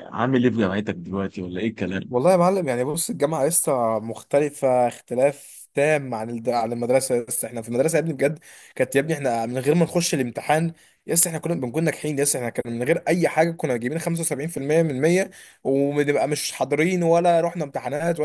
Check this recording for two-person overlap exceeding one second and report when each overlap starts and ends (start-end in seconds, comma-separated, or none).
none